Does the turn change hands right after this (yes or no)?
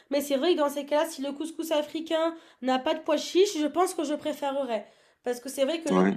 no